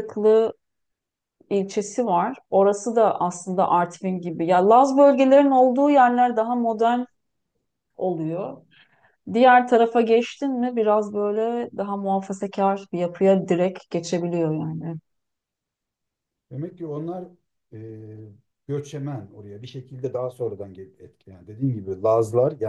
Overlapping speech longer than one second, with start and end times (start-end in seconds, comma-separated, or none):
none